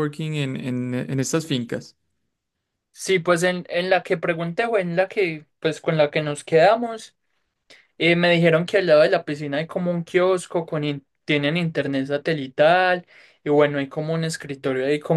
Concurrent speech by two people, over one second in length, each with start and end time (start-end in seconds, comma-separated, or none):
none